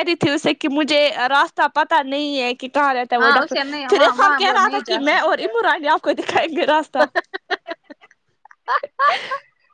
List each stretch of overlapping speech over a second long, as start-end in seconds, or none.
3.2-5.4